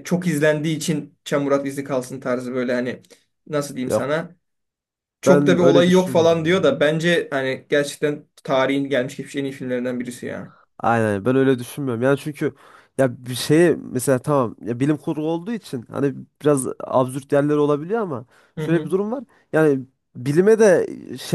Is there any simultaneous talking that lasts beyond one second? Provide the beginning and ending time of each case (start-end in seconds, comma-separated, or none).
5.2-6.8